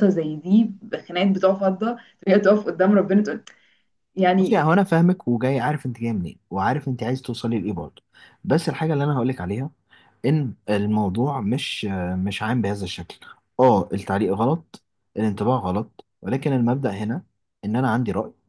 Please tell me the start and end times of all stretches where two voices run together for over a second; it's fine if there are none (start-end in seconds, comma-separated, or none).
none